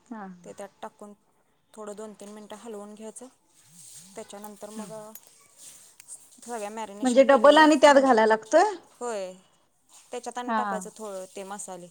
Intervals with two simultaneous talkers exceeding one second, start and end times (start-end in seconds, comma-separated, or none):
7.0-8.7